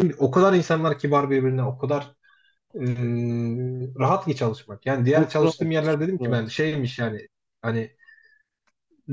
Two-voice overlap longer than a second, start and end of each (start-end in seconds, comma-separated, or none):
5.0-6.6